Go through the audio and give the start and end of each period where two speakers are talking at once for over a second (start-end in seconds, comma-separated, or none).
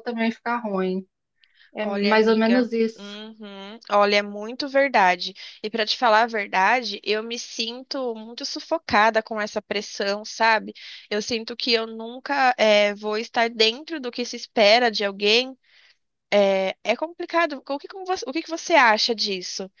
1.8-3.2